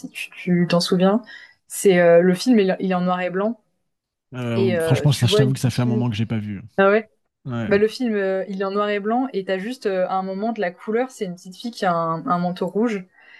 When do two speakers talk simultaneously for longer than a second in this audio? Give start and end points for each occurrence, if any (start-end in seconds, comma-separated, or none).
4.5-6.1